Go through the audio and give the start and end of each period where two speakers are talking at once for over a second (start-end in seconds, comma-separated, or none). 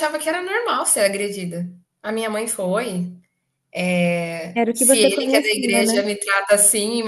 4.7-6.0